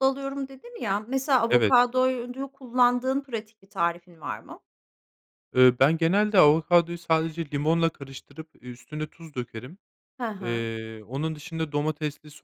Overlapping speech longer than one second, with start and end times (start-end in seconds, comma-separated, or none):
none